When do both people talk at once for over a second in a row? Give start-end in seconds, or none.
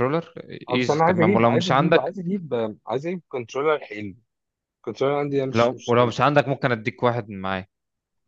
0.7-2.1